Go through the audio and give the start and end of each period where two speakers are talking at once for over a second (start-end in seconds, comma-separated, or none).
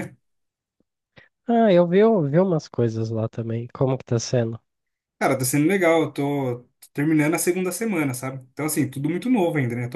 none